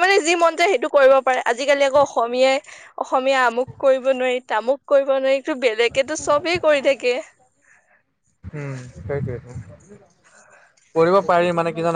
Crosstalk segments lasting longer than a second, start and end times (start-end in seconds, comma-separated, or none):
none